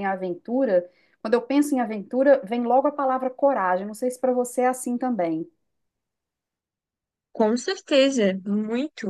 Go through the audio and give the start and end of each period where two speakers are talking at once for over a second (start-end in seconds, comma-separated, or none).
none